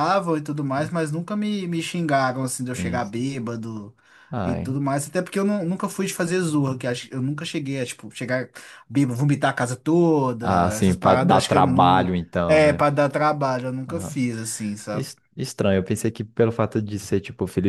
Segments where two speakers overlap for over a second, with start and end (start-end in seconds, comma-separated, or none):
10.4-12.8